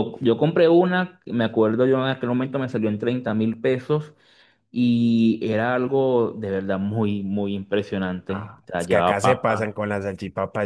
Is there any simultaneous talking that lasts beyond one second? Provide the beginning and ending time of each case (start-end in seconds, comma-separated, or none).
8.3-9.8